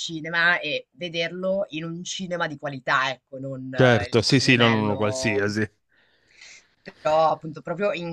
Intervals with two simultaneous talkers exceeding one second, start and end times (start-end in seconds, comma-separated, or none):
3.7-5.5